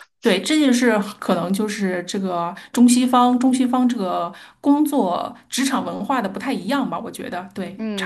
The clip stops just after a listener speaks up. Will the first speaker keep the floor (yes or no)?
no